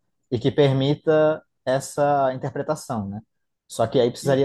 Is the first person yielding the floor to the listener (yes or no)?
no